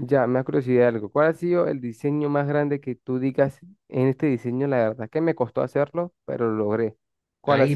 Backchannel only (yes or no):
no